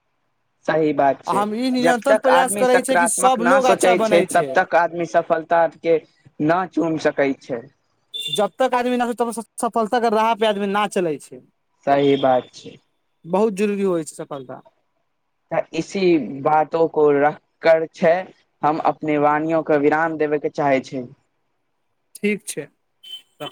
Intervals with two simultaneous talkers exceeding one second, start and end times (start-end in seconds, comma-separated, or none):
1.9-4.2